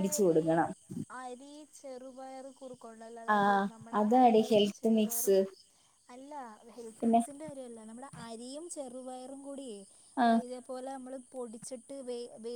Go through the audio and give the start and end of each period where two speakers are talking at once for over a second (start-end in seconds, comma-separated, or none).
3.3-5.4